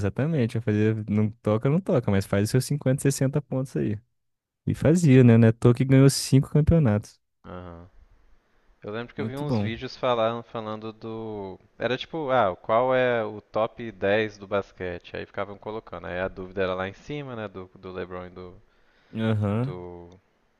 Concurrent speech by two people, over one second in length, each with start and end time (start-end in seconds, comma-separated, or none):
none